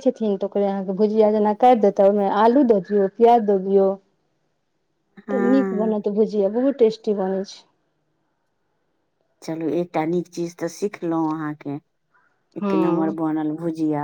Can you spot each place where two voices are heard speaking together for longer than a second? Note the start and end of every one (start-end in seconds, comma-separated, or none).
none